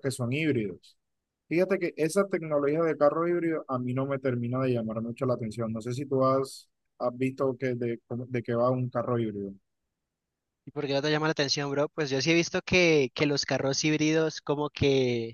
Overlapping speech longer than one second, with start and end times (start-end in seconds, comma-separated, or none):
none